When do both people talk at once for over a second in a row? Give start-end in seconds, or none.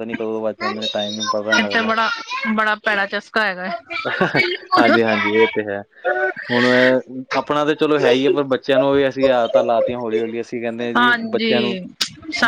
none